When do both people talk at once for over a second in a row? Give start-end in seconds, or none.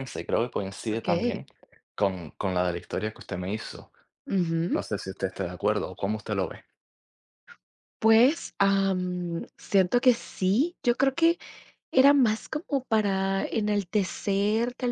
none